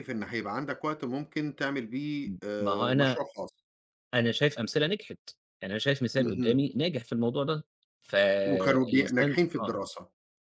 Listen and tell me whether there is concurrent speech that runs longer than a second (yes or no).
yes